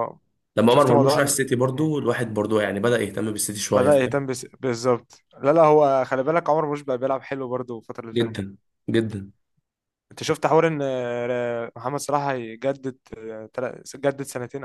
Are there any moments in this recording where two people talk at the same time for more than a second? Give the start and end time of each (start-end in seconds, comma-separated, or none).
0.7-1.9